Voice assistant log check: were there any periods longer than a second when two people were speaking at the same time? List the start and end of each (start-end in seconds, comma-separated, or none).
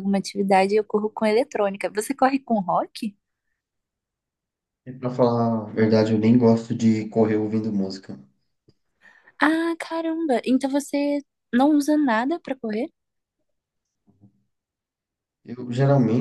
none